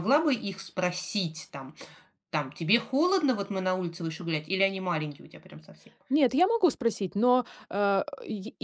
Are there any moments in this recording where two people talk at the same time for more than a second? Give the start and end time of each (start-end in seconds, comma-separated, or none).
none